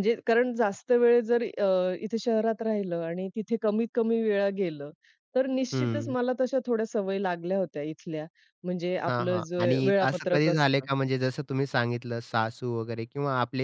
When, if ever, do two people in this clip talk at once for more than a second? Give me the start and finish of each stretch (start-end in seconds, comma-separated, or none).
9.1-10.8